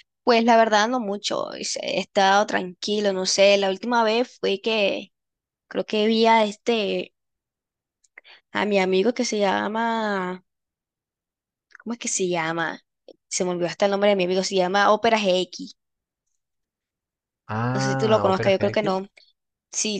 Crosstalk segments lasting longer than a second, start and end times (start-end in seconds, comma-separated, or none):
17.7-19.0